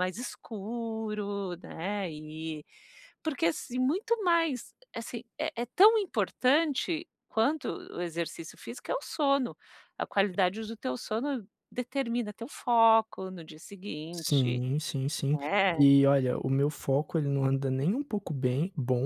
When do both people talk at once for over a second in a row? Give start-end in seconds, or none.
none